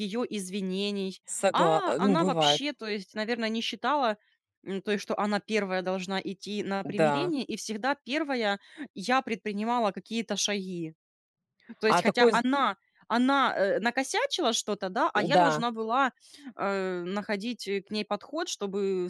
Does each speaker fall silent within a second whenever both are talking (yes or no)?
no